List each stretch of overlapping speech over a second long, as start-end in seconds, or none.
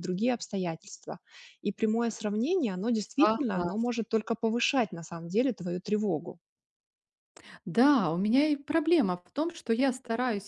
none